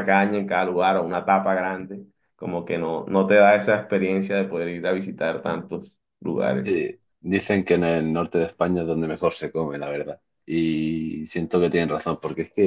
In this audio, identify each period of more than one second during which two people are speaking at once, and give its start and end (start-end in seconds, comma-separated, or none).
none